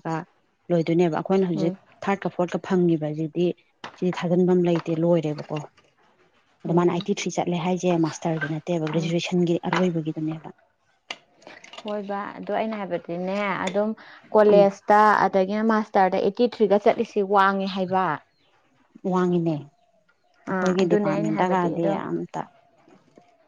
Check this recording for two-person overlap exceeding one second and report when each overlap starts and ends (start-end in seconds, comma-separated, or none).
20.5-21.9